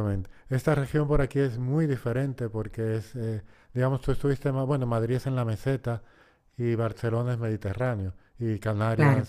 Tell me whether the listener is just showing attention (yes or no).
yes